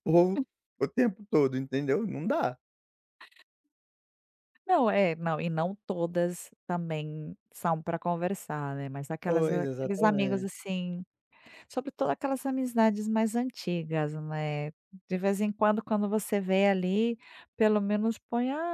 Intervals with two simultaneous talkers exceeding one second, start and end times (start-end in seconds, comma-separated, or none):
9.2-10.5